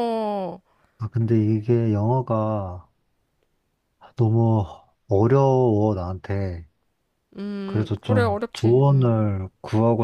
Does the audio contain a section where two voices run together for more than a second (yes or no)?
yes